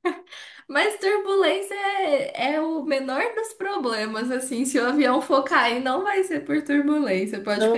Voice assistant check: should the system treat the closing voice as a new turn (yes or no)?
yes